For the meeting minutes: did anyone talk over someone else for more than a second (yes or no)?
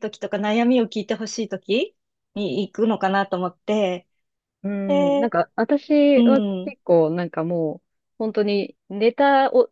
no